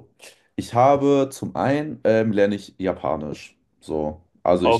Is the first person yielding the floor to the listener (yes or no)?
no